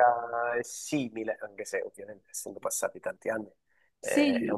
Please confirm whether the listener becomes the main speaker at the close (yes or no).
no